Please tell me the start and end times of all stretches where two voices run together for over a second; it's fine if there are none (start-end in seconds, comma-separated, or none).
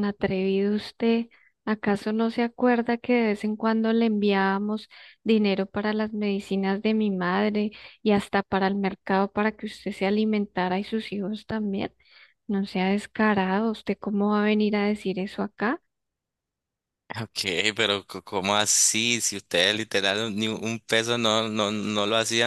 none